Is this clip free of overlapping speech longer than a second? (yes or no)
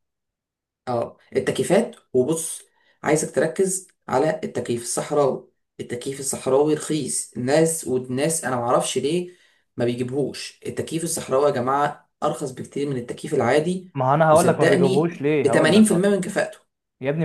no